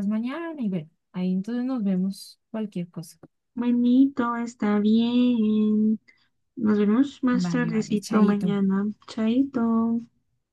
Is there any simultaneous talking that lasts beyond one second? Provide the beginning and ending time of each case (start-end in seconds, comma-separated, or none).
7.3-8.6